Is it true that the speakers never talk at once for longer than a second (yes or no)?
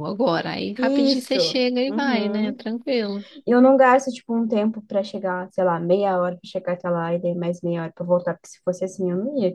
no